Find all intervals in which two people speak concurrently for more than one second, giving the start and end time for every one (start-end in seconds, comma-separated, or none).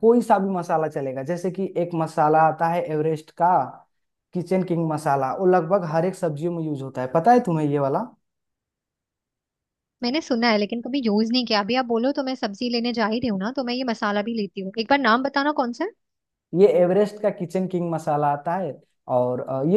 none